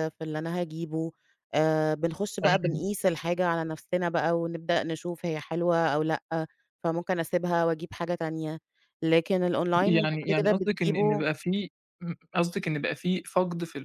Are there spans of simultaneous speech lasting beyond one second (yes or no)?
yes